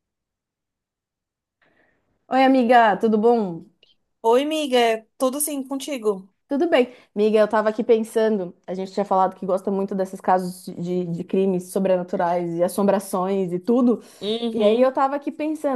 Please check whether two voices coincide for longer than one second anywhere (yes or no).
no